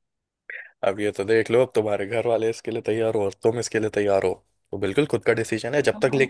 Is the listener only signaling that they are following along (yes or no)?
yes